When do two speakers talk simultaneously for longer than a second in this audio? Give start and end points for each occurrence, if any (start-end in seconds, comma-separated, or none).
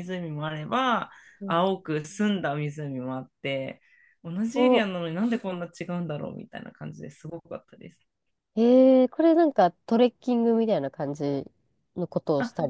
none